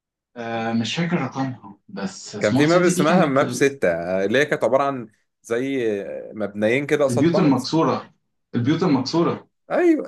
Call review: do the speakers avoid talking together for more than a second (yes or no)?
no